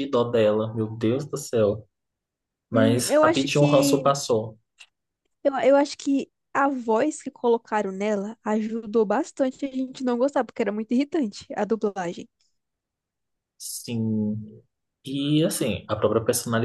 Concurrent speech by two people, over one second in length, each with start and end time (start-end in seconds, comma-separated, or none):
2.7-4.1